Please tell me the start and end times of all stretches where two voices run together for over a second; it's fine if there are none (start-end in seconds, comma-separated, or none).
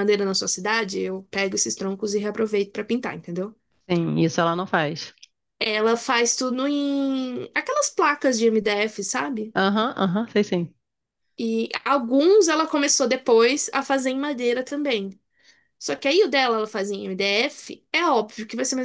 none